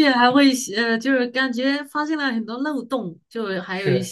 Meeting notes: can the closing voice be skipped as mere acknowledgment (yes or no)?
yes